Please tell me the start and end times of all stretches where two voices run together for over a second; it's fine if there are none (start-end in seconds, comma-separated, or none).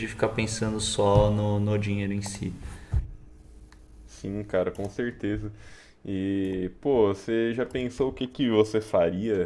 none